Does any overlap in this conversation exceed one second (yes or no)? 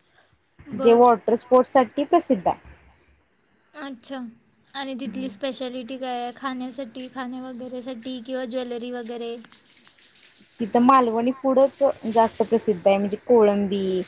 no